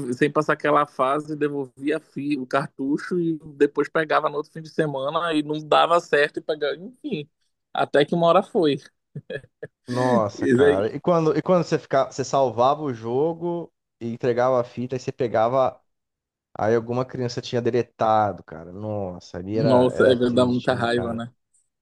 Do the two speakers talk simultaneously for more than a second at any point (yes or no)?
yes